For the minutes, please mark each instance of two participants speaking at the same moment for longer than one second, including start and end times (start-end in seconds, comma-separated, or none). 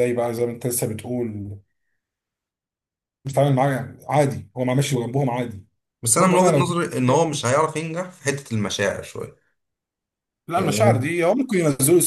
none